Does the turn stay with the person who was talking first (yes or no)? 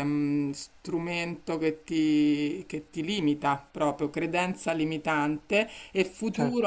yes